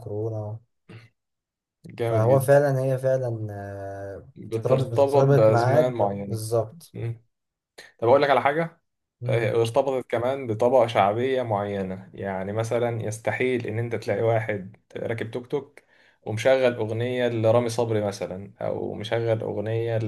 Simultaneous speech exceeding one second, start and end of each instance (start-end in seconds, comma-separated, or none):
4.3-6.4